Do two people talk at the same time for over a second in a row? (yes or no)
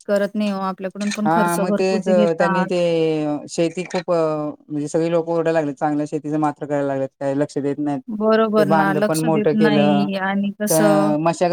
yes